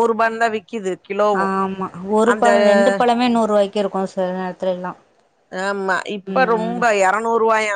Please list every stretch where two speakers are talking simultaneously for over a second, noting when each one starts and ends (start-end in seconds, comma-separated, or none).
none